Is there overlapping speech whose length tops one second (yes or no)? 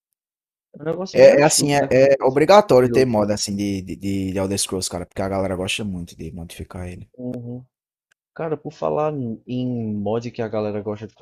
yes